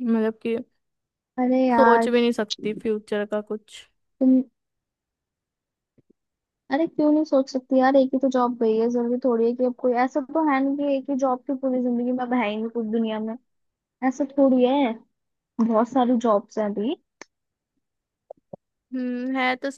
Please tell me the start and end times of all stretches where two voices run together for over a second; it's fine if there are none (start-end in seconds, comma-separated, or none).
none